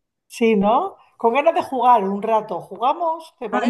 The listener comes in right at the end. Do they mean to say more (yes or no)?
yes